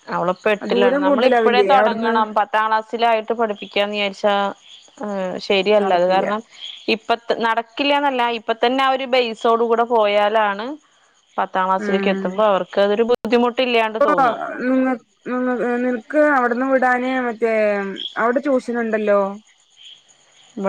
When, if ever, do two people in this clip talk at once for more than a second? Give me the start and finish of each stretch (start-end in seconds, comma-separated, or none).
0.7-2.1